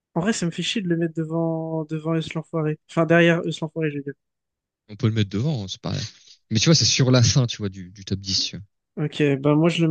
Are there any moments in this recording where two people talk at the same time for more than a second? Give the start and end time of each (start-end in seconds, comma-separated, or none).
none